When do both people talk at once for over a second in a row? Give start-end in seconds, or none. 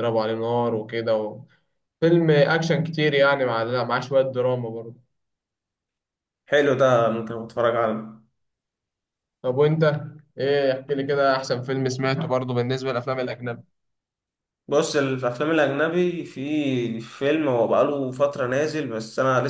none